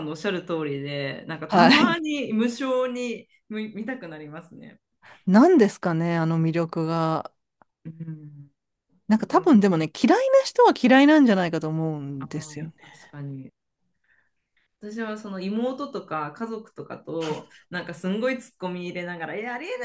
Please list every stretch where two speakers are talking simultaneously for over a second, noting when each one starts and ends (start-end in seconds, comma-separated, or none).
none